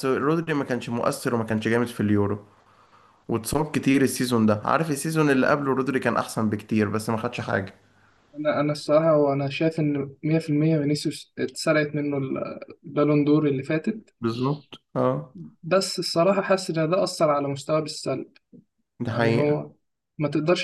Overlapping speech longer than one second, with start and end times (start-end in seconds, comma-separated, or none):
none